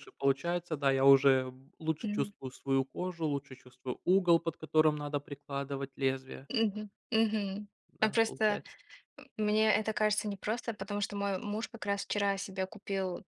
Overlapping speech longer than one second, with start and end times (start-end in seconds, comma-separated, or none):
none